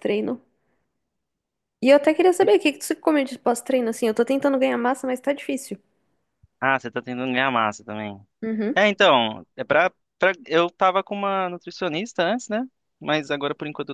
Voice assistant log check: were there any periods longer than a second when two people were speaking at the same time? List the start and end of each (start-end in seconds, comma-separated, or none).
none